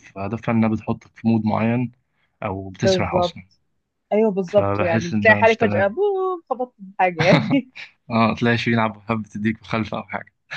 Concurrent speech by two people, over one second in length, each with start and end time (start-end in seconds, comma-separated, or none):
4.5-5.9